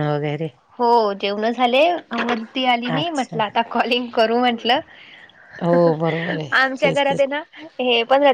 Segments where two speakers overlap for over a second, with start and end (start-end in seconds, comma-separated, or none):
5.7-7.2